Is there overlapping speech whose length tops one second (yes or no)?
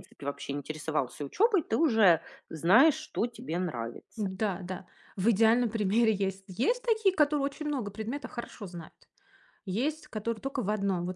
no